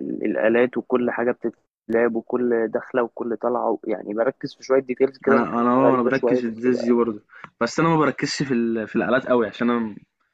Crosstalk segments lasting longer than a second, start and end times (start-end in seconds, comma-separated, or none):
5.3-7.0